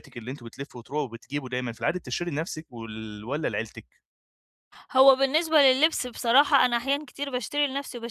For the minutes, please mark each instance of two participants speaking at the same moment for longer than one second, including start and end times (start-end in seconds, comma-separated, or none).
none